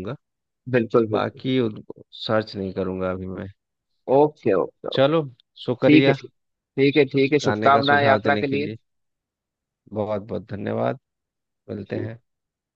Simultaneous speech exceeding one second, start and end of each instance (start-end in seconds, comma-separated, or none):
7.4-8.8